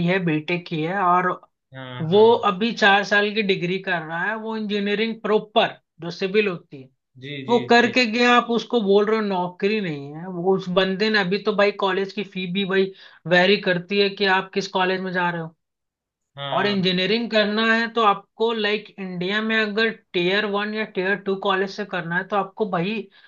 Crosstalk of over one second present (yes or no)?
no